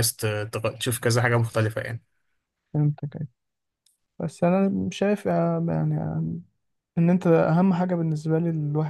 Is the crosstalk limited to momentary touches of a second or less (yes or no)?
yes